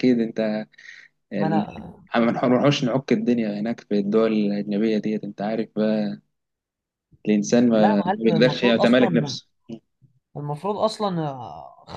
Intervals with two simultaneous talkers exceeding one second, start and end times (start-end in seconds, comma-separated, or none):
7.8-9.4